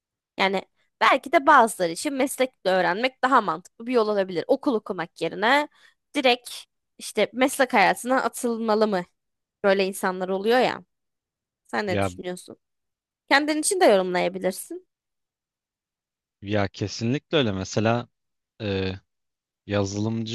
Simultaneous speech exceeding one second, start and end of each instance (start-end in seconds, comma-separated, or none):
none